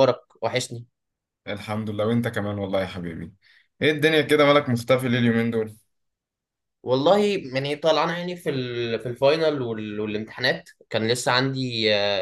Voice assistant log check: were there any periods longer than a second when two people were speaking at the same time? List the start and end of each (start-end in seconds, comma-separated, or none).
none